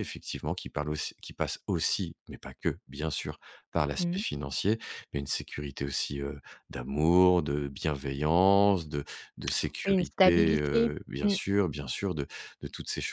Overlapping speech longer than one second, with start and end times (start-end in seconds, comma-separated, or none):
9.8-11.3